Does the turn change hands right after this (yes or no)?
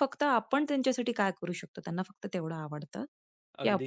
no